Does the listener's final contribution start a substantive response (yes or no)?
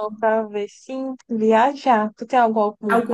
no